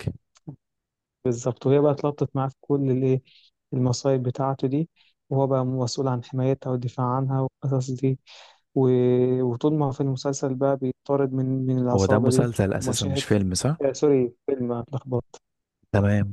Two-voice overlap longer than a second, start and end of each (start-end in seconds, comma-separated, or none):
11.9-13.2